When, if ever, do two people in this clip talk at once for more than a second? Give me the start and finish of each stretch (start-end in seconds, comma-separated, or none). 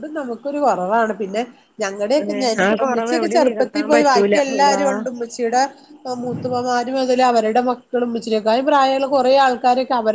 2.4-4.8